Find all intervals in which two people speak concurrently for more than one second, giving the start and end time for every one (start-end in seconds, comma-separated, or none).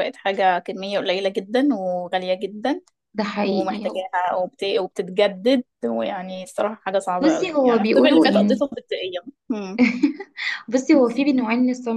7.2-8.6